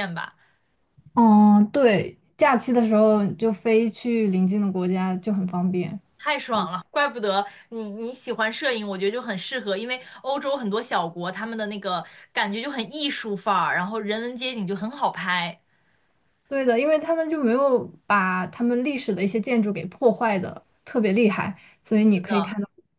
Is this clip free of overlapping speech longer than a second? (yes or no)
yes